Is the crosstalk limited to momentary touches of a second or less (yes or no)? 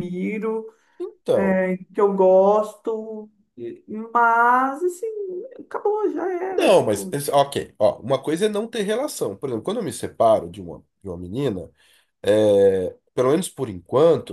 yes